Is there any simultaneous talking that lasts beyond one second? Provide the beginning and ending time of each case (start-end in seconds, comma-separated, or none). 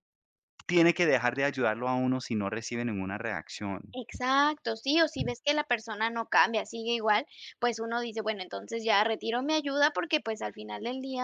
none